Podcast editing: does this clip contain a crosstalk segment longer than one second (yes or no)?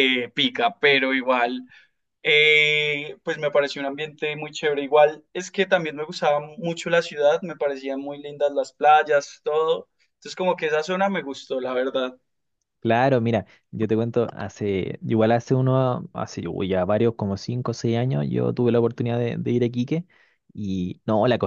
no